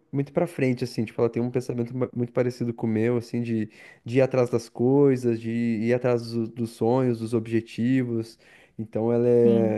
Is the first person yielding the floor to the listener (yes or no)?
no